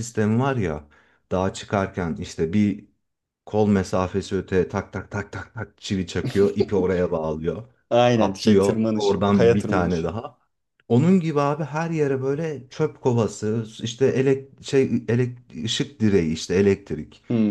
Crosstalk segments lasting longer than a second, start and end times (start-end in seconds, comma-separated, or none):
8.1-10.1